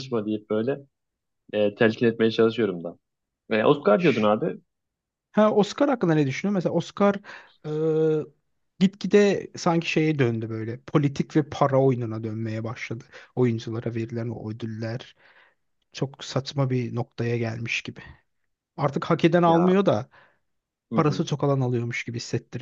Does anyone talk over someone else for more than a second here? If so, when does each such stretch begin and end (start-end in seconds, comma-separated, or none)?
none